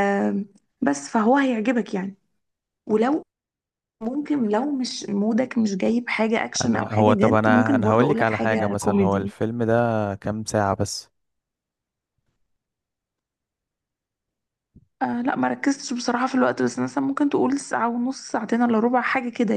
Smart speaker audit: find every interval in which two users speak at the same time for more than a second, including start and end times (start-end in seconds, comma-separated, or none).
6.6-9.3